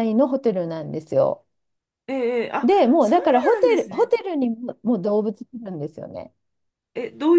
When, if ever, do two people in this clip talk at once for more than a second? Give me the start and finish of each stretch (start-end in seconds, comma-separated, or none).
2.6-4.1